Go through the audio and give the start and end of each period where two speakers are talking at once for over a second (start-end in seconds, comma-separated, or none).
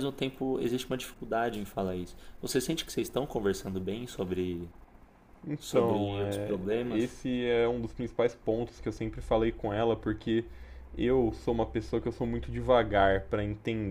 5.6-7.2